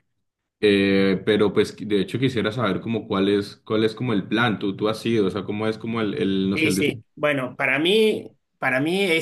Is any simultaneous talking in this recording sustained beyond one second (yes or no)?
no